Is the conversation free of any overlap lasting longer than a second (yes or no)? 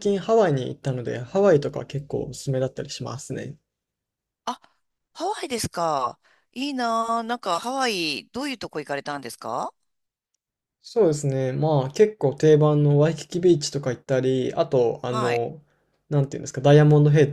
yes